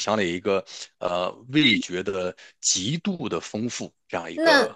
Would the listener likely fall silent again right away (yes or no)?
no